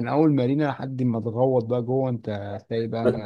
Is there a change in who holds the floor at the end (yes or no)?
yes